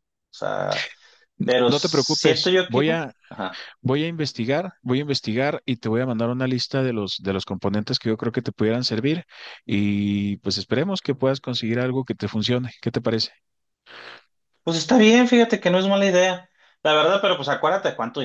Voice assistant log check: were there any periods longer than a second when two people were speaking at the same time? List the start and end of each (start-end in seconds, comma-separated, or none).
1.7-3.1